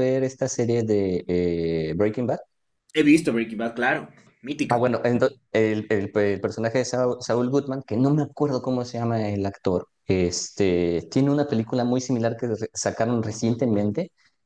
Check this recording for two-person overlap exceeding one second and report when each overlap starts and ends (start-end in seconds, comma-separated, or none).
none